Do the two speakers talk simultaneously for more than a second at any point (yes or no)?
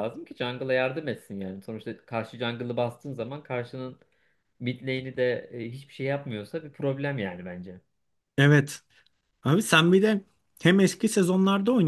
no